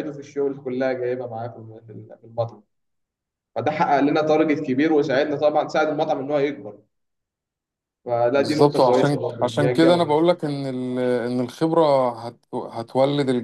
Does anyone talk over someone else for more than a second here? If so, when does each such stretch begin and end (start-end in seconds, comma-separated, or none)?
8.4-10.2